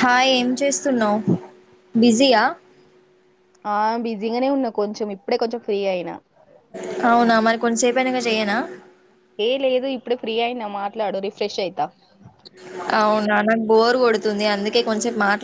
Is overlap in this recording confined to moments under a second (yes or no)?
yes